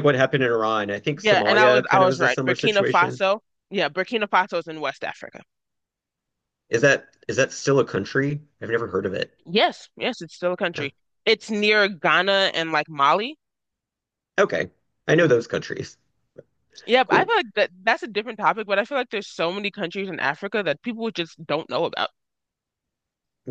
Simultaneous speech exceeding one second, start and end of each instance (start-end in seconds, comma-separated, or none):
1.2-3.2